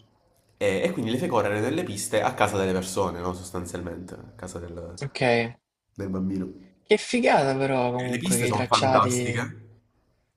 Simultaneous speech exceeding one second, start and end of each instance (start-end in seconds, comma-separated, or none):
8.0-9.5